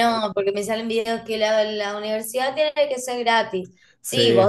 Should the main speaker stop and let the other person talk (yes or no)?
no